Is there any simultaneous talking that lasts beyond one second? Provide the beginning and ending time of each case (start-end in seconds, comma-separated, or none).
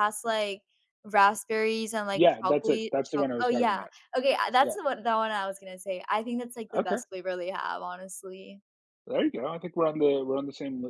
2.1-3.9